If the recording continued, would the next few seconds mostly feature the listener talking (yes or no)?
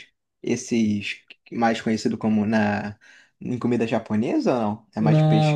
yes